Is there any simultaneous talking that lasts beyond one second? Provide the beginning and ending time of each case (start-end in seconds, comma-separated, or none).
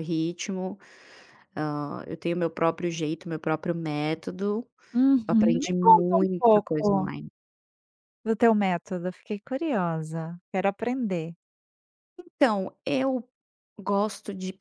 5.3-7.1